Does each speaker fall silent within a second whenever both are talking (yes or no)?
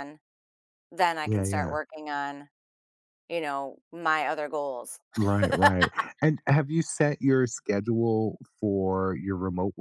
yes